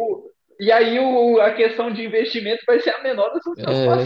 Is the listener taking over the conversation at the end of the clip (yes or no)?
yes